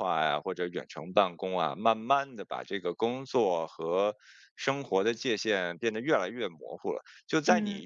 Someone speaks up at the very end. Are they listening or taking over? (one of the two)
listening